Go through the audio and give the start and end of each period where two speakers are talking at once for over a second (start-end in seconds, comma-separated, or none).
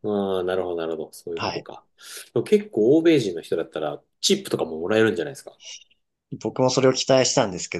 none